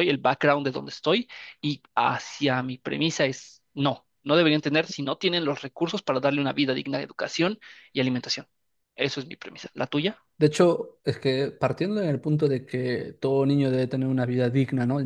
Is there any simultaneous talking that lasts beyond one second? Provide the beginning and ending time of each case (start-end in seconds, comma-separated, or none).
none